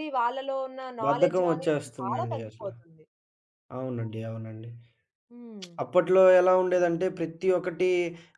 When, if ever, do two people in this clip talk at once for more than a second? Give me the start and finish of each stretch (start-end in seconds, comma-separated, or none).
1.1-2.7